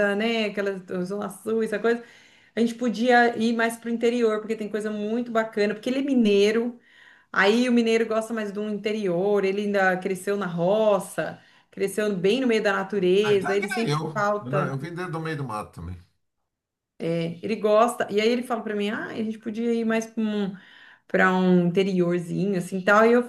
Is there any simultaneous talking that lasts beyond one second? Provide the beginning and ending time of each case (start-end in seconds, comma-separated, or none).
13.2-14.8